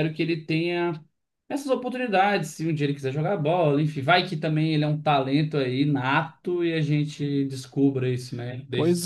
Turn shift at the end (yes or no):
yes